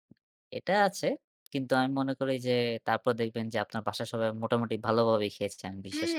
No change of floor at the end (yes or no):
no